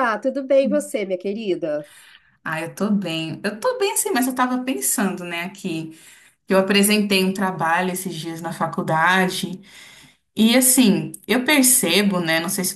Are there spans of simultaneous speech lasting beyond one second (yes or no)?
no